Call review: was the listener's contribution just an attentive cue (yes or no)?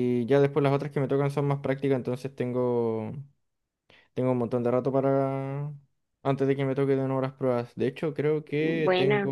yes